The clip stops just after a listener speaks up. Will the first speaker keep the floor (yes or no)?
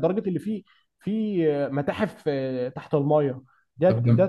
yes